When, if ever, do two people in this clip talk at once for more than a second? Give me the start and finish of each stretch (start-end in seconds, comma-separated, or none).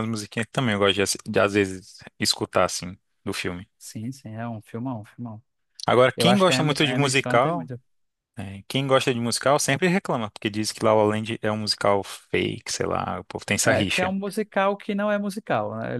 6.2-7.7